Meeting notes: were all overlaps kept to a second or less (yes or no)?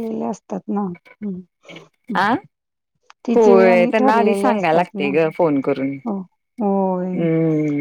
no